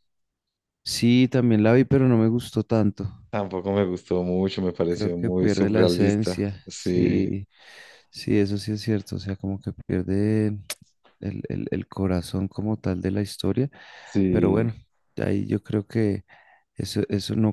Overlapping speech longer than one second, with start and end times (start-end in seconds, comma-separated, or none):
4.9-7.3